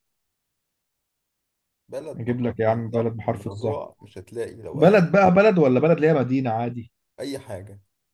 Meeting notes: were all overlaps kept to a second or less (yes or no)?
no